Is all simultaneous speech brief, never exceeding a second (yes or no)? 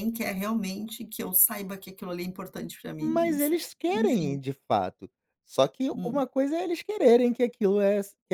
no